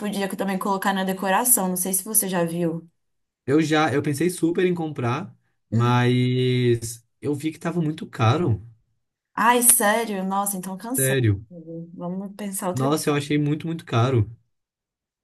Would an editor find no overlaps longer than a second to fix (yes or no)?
yes